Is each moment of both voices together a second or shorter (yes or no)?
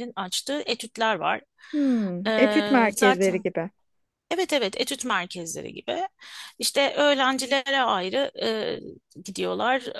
no